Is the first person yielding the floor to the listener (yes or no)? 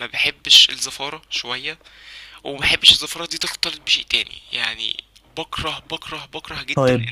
no